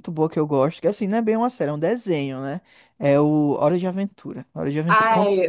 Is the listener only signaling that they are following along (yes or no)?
yes